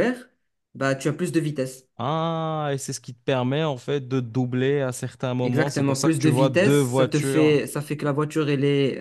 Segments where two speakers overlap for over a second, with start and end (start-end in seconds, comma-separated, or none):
5.4-7.6